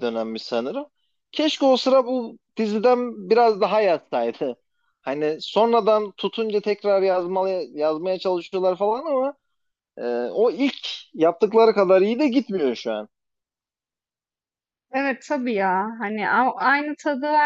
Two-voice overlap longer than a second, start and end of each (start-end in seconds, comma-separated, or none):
none